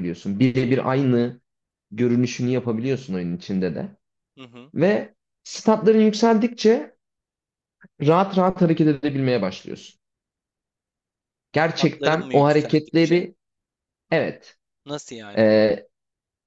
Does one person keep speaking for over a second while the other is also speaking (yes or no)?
yes